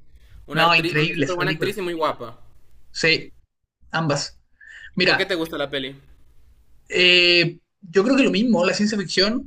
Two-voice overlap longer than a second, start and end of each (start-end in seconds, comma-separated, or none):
0.5-1.7